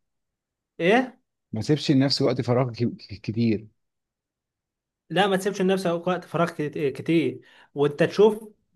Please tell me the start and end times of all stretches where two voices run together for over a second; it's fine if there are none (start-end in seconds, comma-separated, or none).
none